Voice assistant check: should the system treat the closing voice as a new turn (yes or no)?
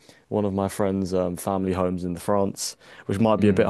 no